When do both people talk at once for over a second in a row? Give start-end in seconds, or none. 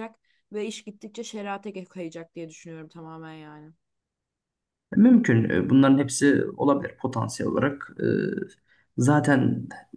none